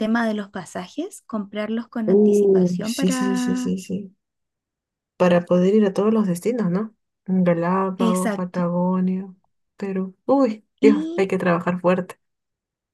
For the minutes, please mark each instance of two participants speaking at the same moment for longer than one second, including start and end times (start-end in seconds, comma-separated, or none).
2.1-3.7